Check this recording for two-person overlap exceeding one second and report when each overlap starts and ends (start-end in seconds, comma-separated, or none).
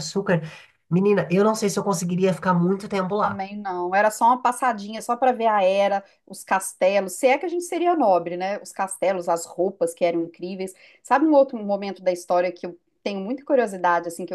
none